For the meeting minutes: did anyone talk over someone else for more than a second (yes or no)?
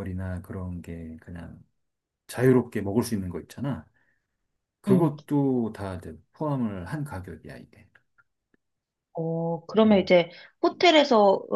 no